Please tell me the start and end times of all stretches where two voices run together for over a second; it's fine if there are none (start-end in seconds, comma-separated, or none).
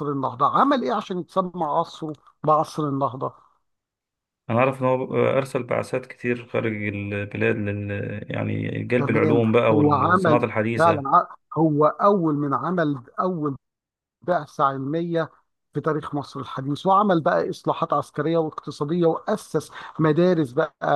9.0-11.0